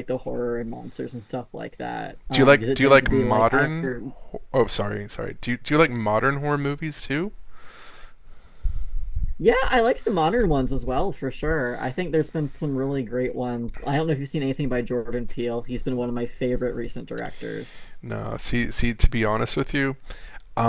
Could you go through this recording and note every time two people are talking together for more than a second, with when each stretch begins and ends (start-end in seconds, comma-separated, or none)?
2.3-3.7